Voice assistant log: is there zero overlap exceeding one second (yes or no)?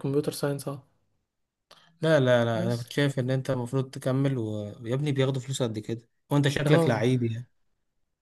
yes